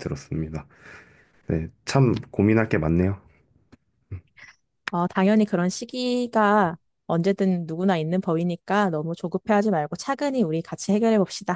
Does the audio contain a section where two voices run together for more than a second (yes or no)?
no